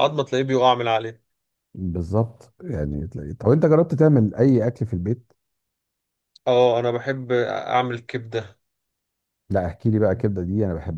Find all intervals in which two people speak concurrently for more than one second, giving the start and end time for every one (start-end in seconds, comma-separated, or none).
none